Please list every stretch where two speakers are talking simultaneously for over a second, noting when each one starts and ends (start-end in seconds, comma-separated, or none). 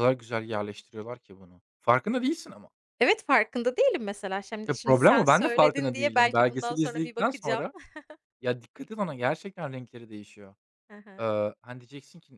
4.6-7.6